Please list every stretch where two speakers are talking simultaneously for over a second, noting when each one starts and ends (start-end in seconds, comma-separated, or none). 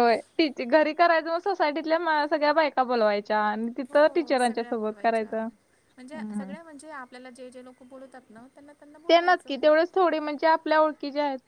3.9-5.3